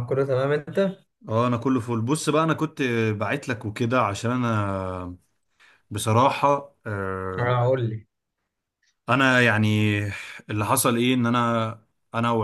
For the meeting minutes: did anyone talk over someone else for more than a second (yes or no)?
no